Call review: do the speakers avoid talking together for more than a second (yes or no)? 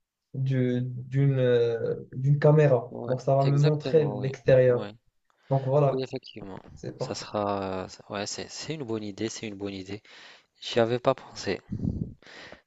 no